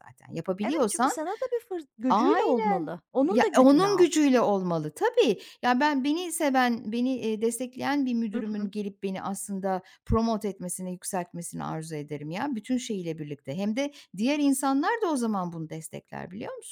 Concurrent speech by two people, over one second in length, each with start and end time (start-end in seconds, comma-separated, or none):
2.1-4.1